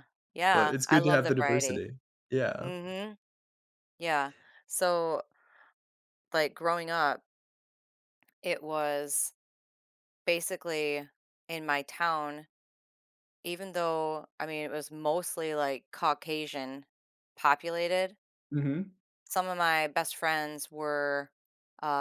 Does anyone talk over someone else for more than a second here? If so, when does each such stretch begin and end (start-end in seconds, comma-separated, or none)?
0.5-1.8